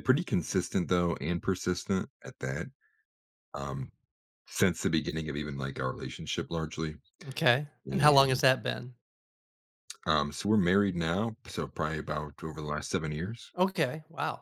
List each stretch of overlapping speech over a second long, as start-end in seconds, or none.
none